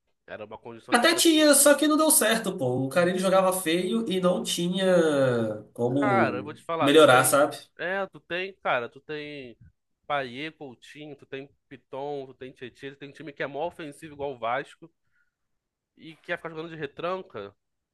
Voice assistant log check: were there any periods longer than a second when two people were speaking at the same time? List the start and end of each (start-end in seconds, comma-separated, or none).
6.0-7.4